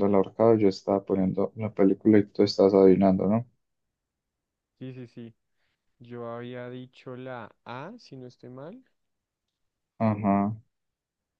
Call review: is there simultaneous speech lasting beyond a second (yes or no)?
no